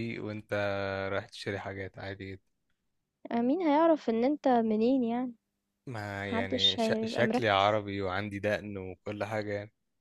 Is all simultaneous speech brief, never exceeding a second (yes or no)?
no